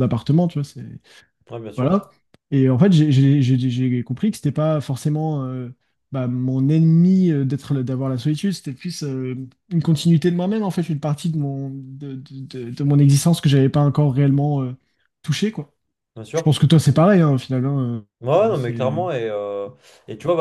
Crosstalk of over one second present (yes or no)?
no